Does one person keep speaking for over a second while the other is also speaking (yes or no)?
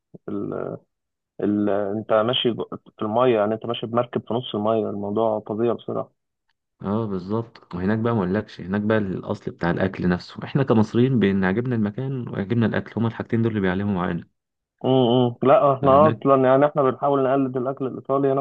no